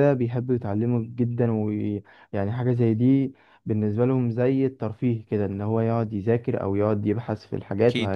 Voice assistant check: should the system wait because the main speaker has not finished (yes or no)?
yes